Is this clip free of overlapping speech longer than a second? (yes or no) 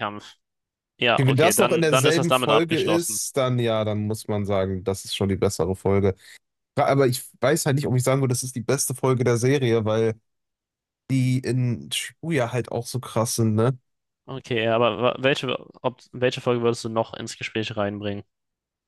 no